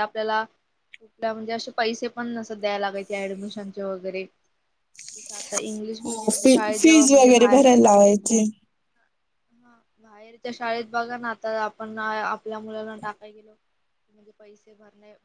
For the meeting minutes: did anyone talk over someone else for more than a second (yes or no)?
yes